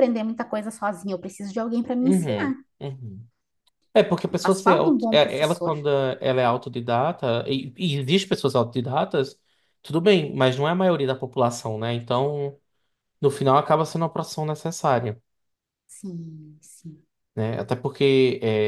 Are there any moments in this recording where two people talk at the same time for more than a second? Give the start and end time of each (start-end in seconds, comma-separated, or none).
4.4-5.8